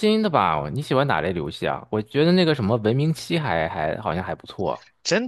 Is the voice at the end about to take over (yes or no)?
yes